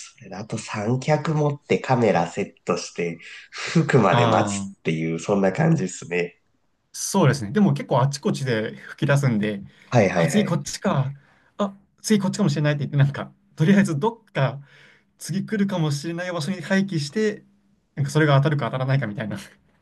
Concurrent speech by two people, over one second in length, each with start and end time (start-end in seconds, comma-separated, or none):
none